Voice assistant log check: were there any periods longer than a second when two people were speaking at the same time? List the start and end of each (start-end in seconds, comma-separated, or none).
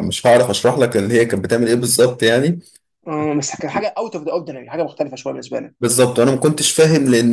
none